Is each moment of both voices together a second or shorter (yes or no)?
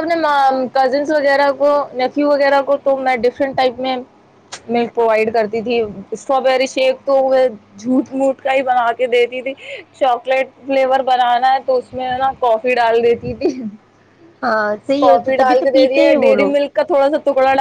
no